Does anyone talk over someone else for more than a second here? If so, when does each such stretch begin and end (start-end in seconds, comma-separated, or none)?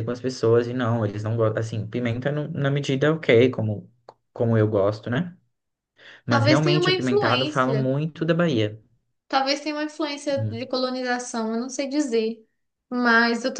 6.3-7.9